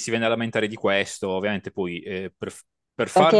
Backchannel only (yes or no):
no